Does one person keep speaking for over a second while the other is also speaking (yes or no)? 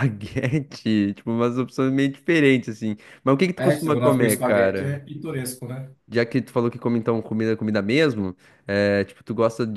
yes